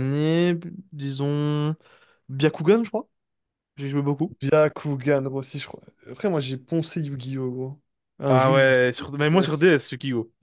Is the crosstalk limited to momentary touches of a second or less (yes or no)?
no